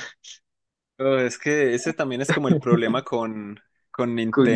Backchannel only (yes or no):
yes